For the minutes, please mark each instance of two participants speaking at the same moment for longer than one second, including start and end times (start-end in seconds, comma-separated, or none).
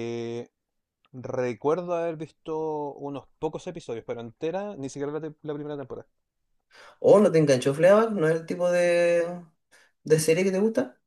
none